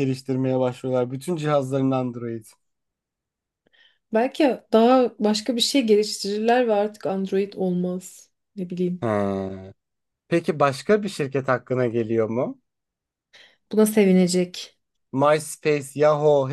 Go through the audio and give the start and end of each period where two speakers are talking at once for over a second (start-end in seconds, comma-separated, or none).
none